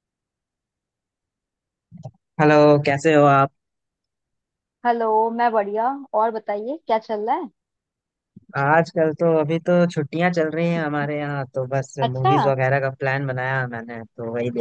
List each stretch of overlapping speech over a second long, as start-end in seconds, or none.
none